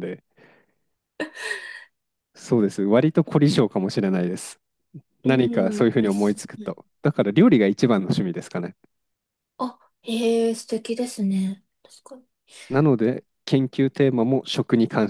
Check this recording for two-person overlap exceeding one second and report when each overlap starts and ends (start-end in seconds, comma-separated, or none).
5.2-6.7